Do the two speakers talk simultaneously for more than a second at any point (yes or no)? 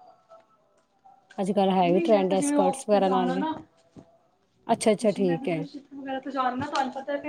yes